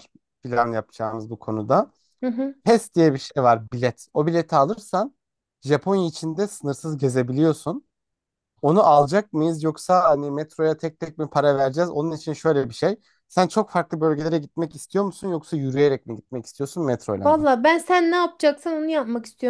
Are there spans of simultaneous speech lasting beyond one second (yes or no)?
no